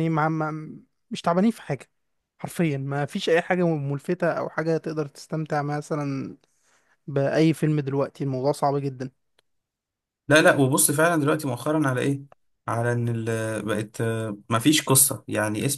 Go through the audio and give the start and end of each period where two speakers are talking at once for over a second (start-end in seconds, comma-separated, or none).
none